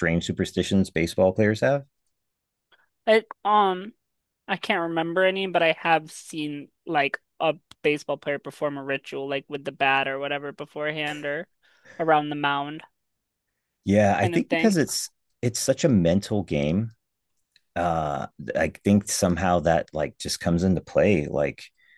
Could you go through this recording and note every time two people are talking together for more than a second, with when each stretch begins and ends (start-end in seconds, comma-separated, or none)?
none